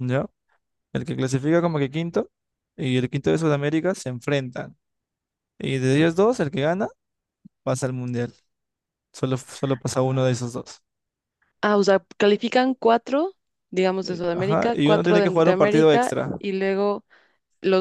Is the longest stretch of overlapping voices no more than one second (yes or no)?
no